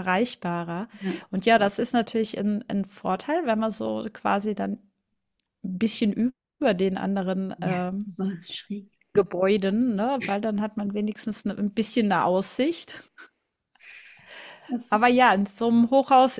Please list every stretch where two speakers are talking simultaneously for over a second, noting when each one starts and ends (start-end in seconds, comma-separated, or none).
none